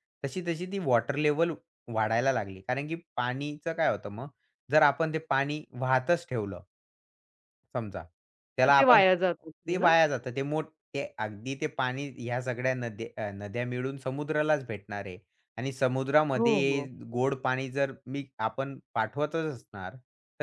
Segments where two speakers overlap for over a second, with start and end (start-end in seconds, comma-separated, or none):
none